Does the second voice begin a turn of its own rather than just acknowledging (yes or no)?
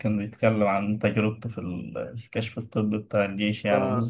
no